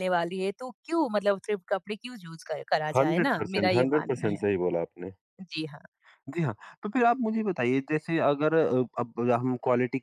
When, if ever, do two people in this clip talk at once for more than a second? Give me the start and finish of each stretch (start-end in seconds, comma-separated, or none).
2.9-4.4